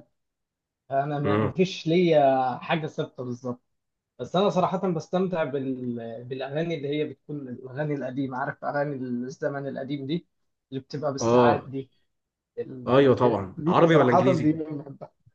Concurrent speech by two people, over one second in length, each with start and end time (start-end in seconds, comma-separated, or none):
12.9-14.5